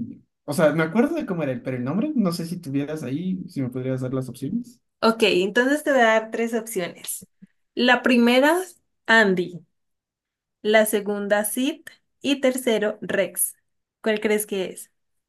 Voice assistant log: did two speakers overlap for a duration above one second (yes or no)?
no